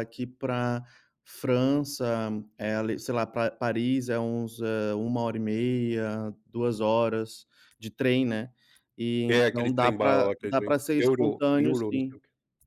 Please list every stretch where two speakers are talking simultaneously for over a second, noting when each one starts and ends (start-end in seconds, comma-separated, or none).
9.3-12.2